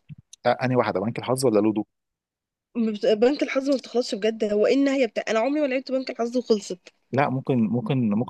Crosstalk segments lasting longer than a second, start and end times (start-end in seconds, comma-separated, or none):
none